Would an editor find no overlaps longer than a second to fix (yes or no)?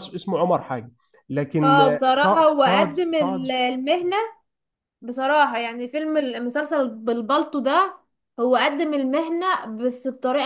no